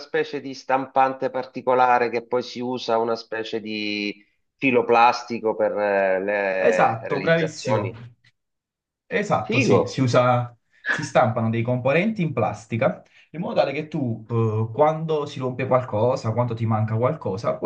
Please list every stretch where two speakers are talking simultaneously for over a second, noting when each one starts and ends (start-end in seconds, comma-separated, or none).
6.6-7.9